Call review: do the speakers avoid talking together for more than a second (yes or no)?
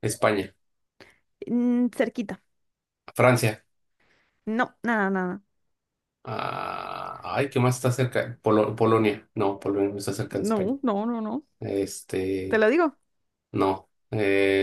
yes